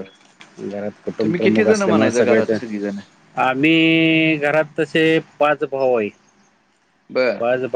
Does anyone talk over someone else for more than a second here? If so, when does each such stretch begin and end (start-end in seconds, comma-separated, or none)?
1.2-2.6